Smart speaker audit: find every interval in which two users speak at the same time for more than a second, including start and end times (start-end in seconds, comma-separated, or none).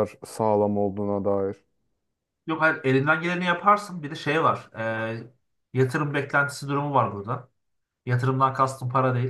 none